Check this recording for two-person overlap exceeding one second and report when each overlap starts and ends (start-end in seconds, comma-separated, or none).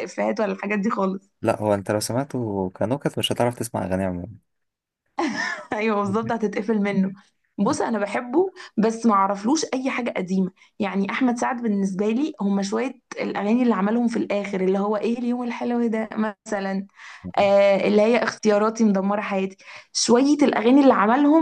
none